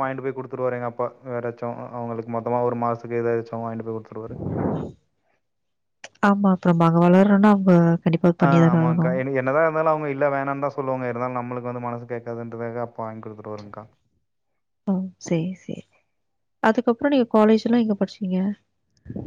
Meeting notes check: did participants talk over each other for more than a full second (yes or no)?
no